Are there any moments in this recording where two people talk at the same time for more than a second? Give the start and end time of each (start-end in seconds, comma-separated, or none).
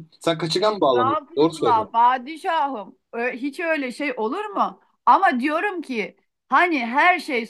0.6-1.9